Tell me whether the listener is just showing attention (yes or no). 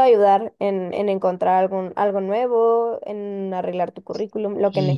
no